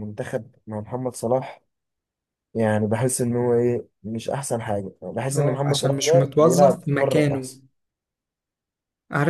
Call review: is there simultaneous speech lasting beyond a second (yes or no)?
yes